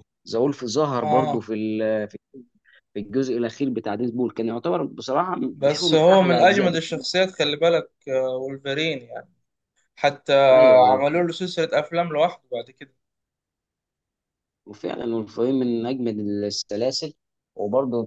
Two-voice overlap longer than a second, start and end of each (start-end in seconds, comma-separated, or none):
5.5-6.8